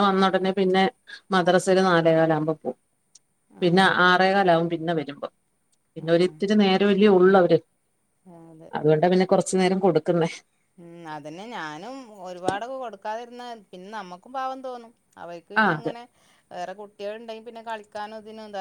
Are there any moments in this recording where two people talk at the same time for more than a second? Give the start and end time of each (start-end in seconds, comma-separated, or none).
none